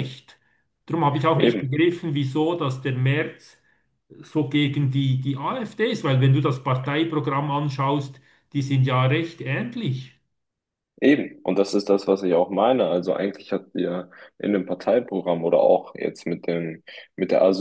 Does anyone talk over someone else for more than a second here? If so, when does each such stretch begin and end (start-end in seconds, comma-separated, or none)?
none